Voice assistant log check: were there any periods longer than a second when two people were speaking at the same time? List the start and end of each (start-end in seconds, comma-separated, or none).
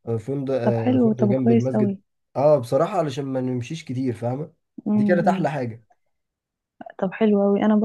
0.6-2.0